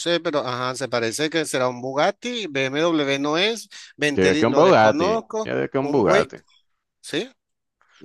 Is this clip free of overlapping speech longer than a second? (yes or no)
no